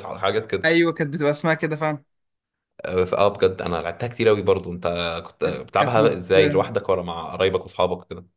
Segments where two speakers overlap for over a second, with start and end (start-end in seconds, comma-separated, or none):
5.4-6.7